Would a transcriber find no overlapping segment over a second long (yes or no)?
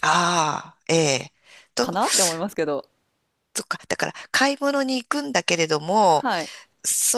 yes